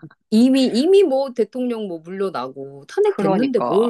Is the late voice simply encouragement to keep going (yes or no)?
no